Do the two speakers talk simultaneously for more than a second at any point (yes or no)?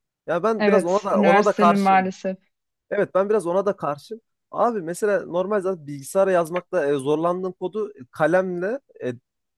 yes